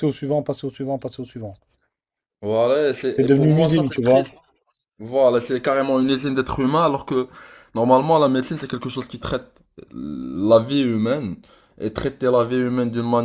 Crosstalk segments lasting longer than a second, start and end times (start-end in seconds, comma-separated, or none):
3.1-4.3